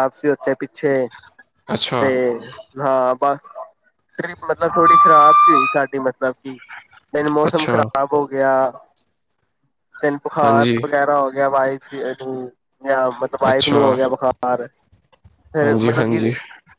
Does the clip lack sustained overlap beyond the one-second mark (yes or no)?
yes